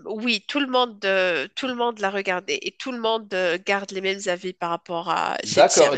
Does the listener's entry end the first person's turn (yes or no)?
yes